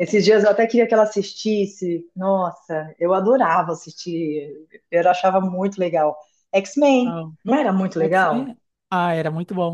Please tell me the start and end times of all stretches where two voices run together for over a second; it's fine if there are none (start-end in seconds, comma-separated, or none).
none